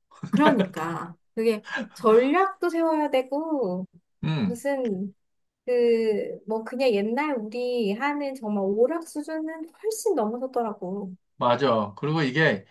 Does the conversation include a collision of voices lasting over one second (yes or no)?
no